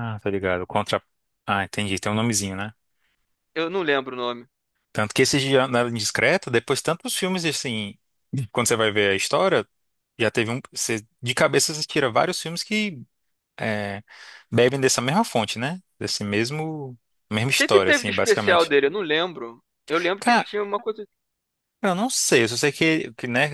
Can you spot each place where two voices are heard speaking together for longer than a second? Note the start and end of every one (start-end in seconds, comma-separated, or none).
17.3-18.7